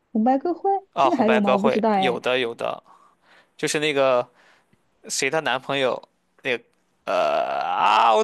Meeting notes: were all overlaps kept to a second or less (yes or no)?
no